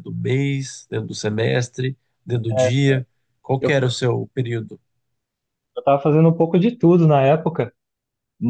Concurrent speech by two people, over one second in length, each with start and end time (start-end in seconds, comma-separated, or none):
none